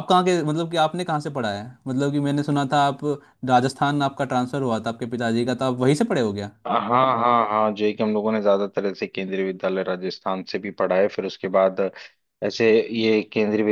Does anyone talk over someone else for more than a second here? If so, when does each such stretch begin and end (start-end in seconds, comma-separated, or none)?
none